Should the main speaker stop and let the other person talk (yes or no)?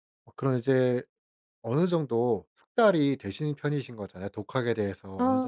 no